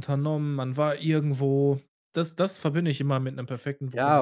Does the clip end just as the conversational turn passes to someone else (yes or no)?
yes